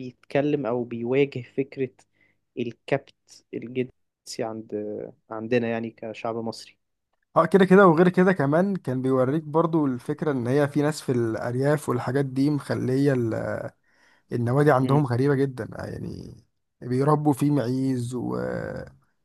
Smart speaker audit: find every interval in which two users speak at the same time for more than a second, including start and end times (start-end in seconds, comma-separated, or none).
none